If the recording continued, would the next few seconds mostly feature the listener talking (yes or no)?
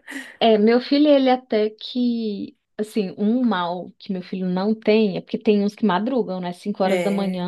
no